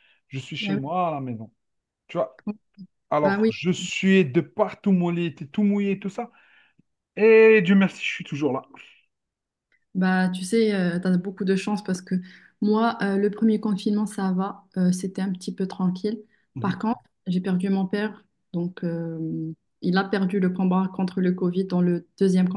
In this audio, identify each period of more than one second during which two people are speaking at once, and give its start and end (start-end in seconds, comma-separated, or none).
none